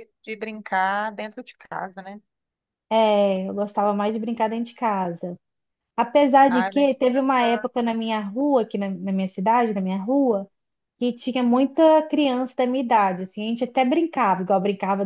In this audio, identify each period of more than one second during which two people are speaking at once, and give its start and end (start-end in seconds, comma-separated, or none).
6.5-7.7